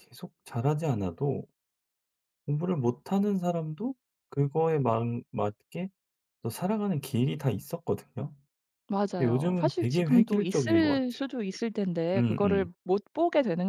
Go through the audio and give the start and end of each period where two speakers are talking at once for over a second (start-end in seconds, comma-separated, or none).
9.2-11.3